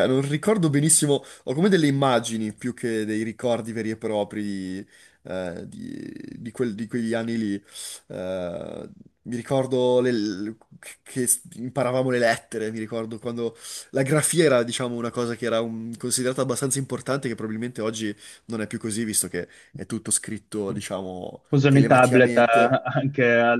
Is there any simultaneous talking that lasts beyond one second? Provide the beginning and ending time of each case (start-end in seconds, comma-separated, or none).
21.5-22.8